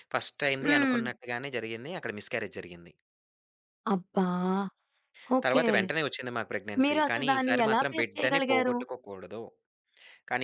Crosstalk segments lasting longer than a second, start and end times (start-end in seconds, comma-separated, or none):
6.8-8.8